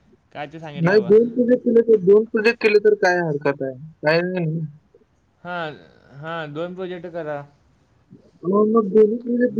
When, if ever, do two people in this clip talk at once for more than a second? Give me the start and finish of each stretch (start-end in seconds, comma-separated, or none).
none